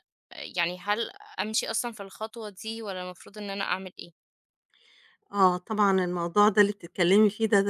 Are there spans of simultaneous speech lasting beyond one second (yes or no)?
no